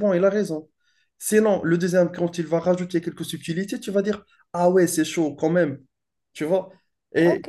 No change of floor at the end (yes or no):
no